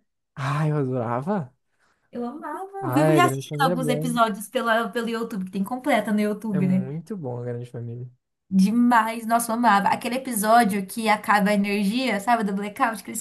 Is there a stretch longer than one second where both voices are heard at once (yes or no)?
yes